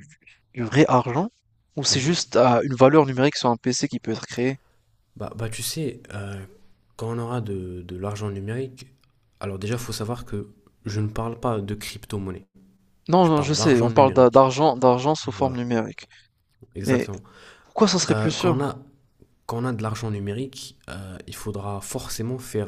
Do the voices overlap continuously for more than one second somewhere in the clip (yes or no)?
yes